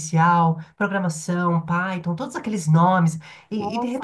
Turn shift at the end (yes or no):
yes